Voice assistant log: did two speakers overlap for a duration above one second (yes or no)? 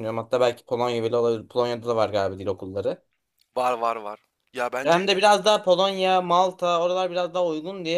no